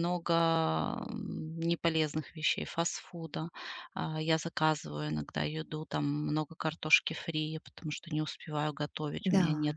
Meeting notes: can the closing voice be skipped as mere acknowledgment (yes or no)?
yes